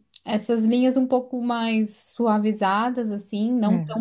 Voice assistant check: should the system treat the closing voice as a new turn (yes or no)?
no